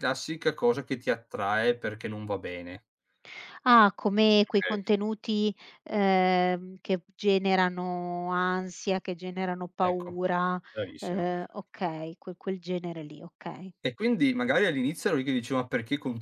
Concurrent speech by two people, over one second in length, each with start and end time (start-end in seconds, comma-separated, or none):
none